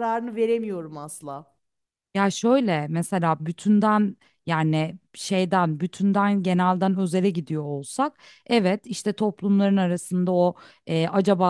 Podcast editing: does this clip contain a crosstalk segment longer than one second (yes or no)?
no